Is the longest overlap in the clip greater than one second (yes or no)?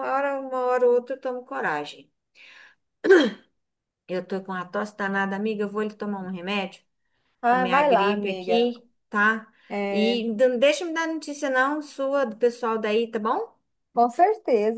yes